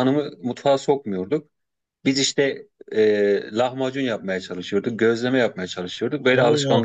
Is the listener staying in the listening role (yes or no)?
no